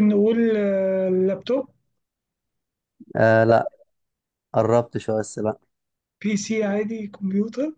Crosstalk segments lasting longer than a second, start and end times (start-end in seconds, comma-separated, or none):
none